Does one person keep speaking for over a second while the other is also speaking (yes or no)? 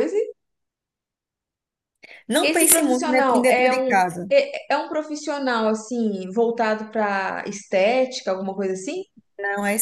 yes